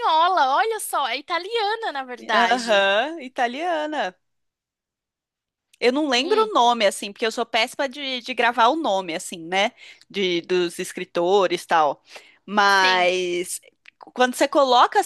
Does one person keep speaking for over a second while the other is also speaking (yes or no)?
no